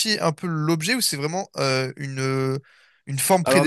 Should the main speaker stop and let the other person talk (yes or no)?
no